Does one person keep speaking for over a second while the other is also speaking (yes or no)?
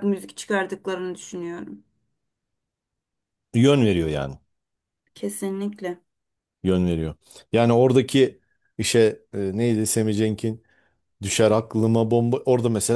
no